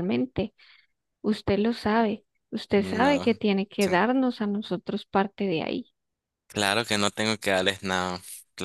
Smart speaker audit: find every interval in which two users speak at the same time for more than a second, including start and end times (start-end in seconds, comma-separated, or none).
none